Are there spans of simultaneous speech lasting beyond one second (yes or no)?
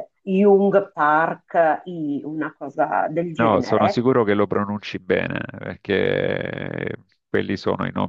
no